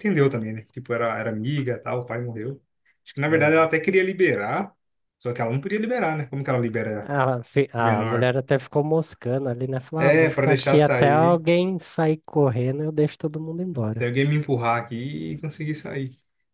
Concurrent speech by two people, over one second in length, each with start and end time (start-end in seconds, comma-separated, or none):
10.0-11.4